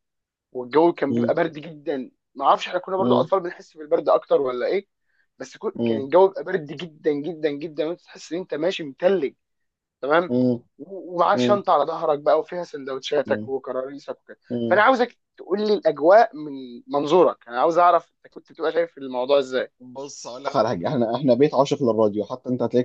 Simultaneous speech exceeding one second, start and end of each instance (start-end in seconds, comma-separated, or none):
none